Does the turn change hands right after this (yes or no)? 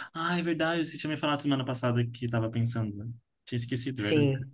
yes